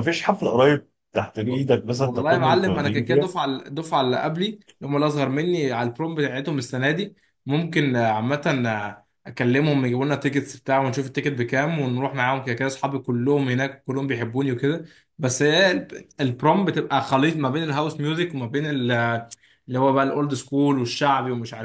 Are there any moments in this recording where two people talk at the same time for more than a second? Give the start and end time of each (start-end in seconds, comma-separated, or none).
2.0-3.2